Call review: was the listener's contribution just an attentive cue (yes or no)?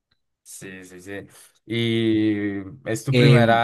yes